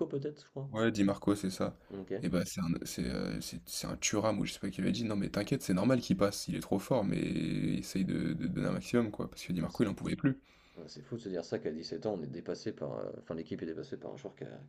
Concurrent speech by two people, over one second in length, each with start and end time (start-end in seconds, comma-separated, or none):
none